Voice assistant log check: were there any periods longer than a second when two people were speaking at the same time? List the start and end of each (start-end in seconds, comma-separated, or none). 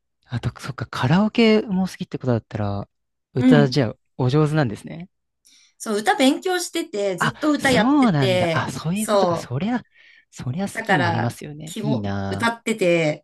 7.2-9.5, 10.7-12.5